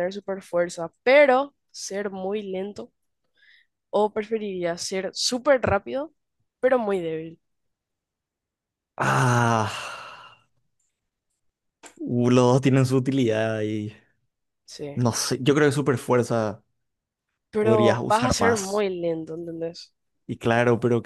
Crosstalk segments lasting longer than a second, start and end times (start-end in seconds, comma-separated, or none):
17.6-18.9